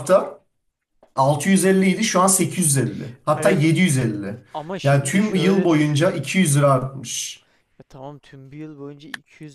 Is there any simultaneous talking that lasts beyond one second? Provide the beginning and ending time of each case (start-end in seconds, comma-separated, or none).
4.8-6.1